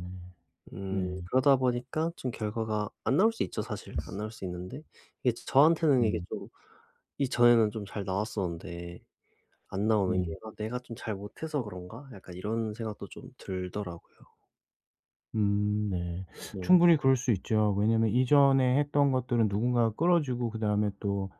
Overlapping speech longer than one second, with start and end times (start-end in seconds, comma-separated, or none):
none